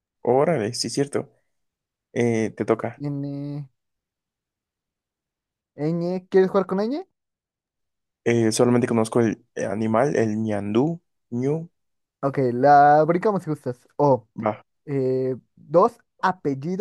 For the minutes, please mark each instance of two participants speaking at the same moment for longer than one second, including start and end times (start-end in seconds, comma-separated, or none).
none